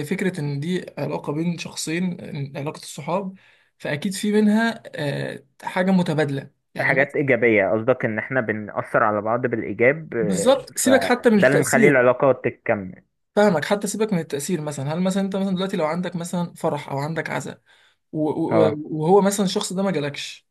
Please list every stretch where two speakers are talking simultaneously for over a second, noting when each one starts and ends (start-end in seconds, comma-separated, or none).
10.2-12.0